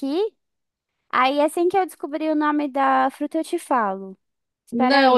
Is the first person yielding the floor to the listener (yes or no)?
yes